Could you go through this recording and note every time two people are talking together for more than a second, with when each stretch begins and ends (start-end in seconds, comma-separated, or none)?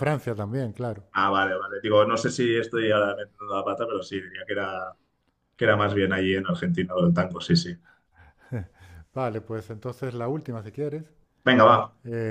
none